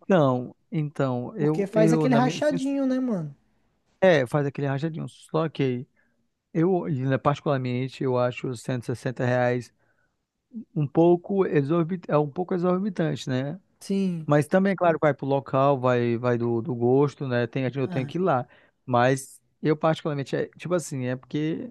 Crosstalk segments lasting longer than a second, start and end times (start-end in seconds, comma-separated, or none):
1.4-2.6